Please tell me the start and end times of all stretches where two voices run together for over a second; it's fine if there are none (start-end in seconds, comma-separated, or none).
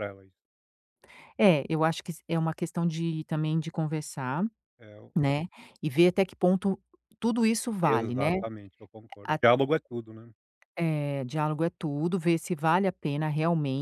none